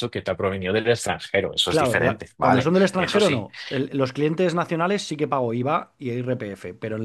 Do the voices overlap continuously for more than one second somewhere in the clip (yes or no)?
yes